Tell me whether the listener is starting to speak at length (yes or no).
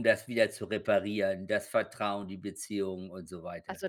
yes